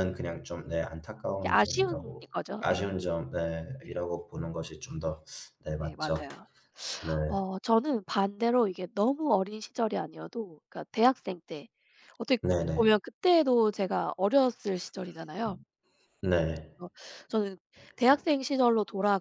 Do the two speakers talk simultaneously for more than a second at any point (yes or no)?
yes